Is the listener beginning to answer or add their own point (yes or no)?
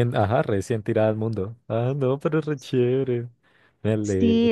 yes